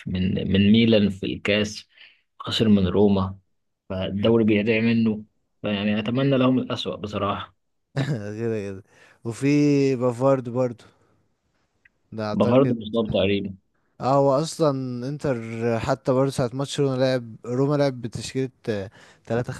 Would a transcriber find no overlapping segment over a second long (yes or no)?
yes